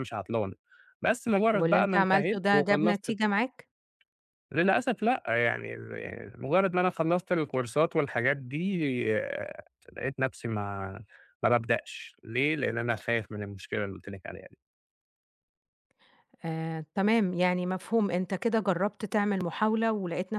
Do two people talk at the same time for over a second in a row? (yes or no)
yes